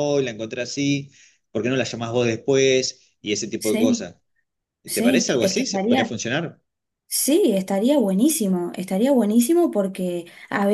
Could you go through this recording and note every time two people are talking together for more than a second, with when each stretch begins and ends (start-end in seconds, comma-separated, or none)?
4.9-6.2